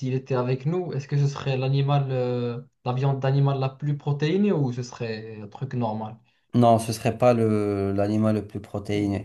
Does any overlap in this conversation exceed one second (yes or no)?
no